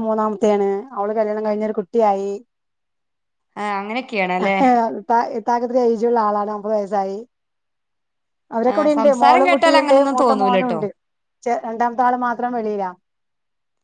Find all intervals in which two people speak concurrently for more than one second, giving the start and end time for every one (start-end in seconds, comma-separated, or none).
8.7-10.8